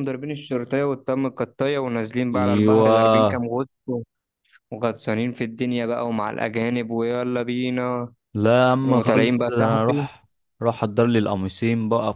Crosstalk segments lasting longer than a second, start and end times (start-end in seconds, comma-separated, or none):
8.8-10.1